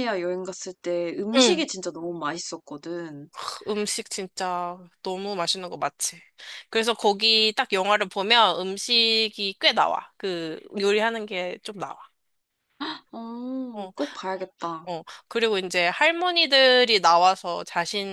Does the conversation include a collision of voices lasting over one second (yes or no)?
no